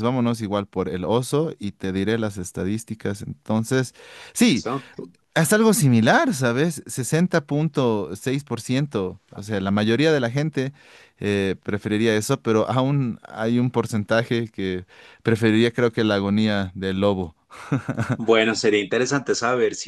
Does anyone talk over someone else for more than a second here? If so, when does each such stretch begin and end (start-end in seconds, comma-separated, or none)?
none